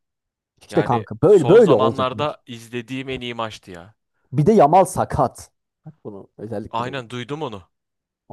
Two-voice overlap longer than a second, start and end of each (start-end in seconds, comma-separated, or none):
0.7-2.3